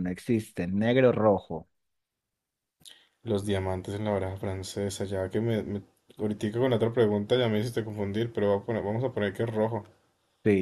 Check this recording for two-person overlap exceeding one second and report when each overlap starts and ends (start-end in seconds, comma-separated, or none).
none